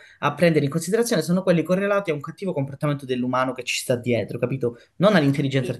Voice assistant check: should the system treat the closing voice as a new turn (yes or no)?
no